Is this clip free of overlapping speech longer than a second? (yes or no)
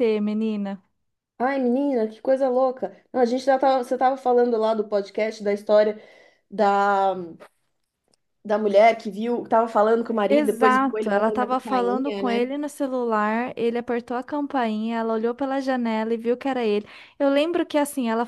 no